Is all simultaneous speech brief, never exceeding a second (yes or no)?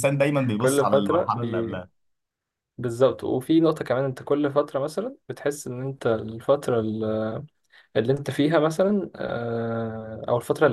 no